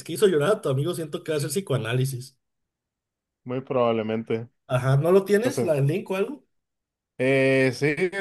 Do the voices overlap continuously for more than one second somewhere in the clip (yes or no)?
no